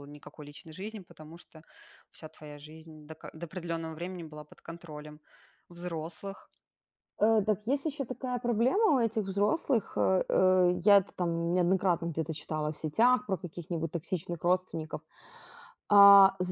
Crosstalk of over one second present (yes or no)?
no